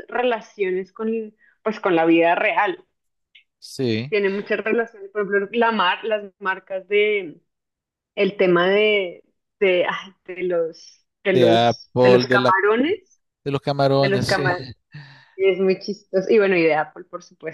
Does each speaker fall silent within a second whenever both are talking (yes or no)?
no